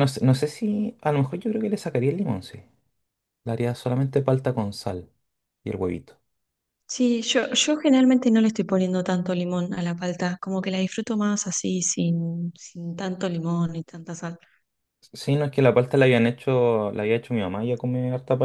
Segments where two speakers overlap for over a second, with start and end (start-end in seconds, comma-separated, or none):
none